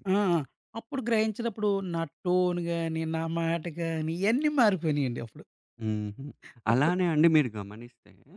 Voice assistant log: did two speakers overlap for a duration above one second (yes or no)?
no